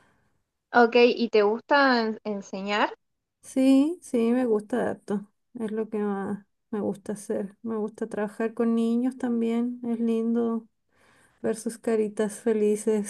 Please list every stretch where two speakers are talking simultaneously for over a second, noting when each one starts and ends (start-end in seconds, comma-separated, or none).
none